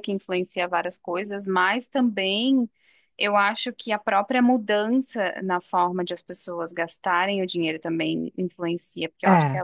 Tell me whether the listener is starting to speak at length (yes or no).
no